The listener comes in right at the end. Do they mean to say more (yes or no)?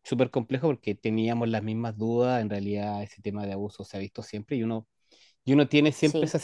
no